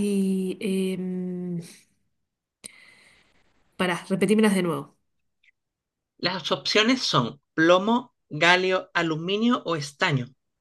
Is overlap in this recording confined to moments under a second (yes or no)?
yes